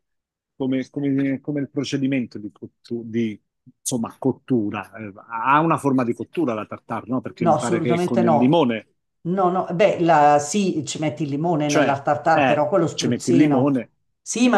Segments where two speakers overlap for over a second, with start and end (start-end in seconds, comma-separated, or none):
7.4-8.6, 11.6-13.8